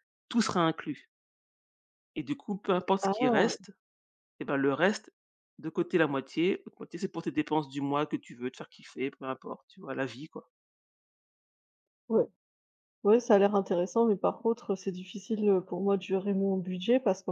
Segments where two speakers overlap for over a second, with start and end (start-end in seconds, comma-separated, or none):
none